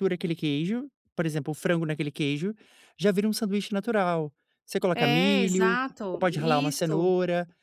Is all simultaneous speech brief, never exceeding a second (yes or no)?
no